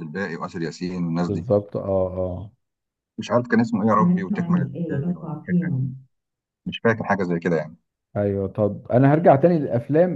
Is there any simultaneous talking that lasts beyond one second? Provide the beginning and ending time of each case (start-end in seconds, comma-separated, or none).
4.0-5.9